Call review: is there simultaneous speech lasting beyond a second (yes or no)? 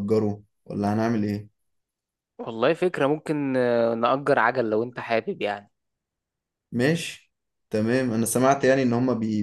no